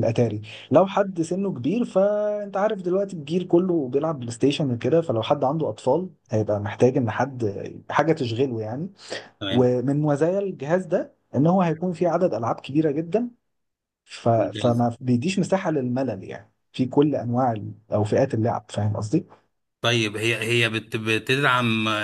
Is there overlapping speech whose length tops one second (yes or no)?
no